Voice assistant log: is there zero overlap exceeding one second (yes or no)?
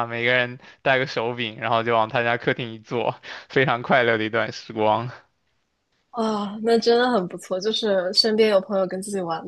yes